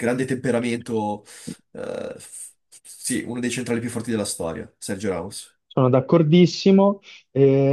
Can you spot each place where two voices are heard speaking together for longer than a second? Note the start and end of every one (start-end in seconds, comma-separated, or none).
none